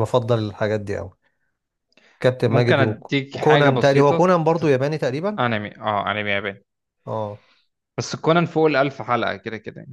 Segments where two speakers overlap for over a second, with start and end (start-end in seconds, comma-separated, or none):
2.5-4.3